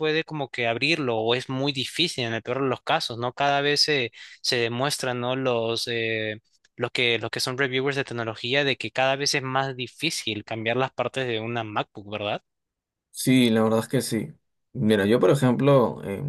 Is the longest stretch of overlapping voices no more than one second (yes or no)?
yes